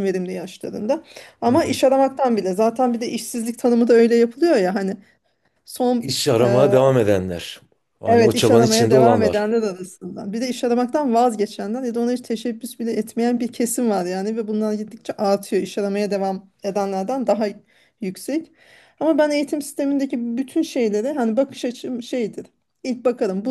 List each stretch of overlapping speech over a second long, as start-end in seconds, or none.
8.1-9.4